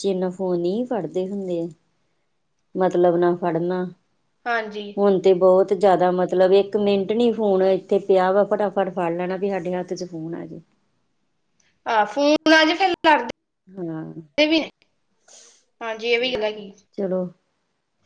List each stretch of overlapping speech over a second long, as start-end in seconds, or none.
none